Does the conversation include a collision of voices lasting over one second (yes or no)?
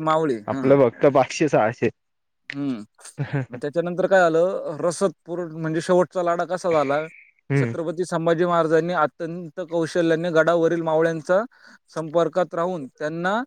no